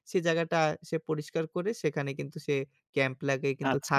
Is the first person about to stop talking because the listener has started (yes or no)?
yes